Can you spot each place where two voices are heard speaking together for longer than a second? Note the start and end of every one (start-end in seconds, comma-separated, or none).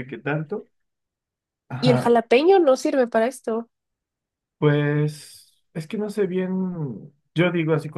none